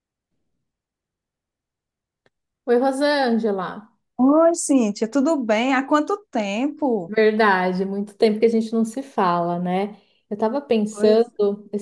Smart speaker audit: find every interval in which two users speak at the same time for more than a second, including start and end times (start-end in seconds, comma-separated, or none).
none